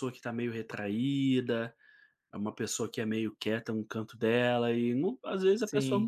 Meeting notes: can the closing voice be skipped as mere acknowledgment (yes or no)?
yes